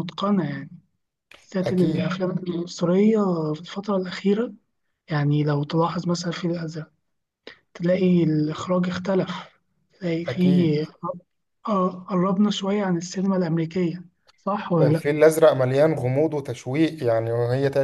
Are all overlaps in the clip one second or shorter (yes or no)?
yes